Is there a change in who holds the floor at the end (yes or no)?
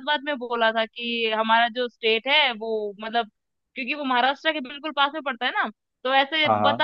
no